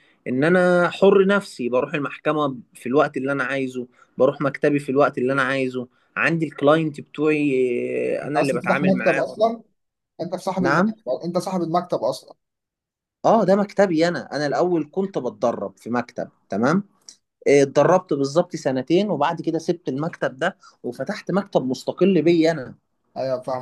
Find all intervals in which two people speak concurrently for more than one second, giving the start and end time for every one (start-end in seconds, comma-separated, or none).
8.2-9.5